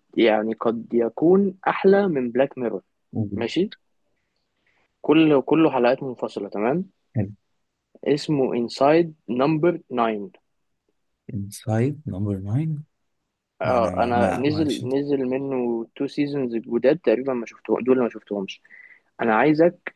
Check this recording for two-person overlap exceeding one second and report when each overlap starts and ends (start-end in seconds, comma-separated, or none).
13.6-14.9